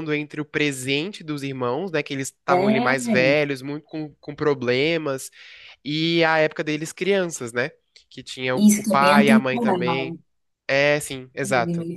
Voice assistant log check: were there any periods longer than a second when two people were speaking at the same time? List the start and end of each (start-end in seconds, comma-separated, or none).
8.6-10.2